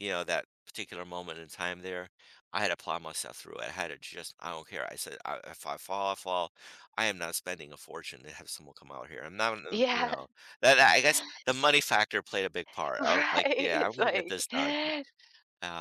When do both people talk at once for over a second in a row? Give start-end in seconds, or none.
13.0-14.4